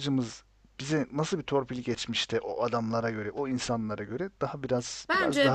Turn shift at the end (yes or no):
yes